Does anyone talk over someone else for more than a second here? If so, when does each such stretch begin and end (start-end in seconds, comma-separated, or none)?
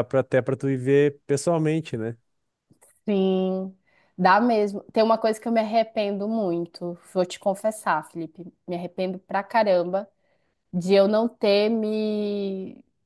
none